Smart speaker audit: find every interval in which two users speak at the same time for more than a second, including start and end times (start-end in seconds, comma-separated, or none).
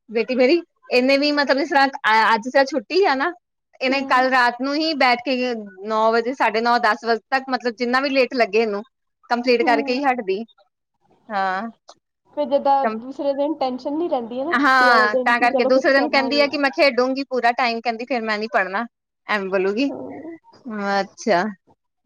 14.6-16.6